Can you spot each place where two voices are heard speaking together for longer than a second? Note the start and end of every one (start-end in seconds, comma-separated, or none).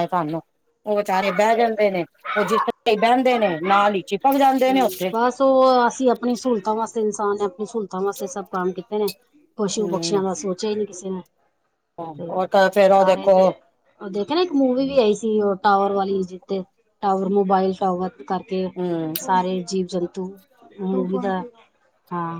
none